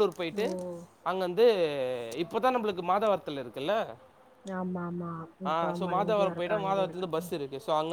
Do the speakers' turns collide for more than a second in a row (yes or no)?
yes